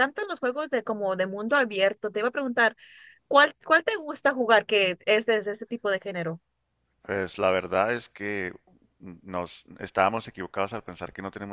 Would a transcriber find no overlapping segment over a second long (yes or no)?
yes